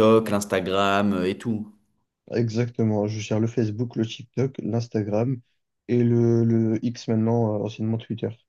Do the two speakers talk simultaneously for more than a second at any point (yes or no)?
no